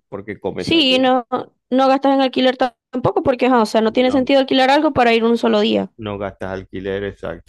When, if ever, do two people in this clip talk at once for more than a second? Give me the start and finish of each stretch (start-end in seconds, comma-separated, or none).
none